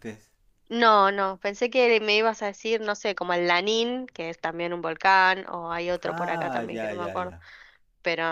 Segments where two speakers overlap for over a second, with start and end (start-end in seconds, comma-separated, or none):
6.0-7.3